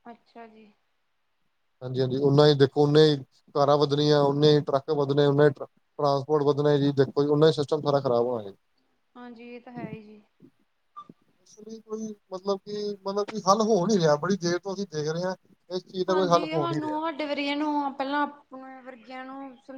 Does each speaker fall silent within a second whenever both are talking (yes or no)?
yes